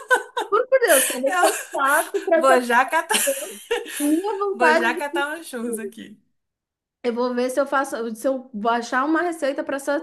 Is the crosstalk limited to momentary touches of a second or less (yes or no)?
no